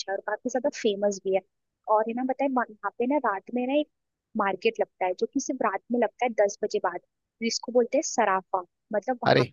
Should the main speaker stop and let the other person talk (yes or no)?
no